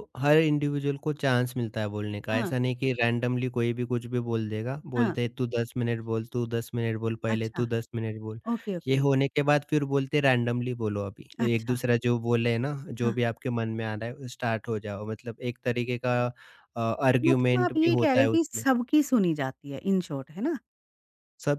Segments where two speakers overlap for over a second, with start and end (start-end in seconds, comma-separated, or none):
17.2-18.6